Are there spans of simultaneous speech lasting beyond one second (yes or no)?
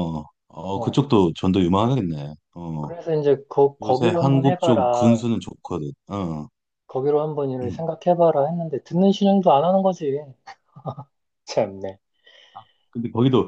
yes